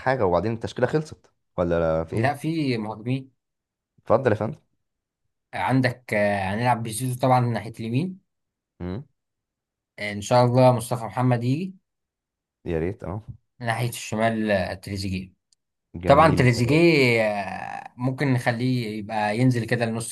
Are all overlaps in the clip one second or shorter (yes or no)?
yes